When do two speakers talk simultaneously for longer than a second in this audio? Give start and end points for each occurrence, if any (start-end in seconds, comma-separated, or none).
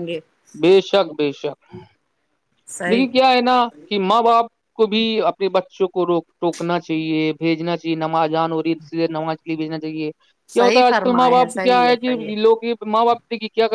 10.6-12.2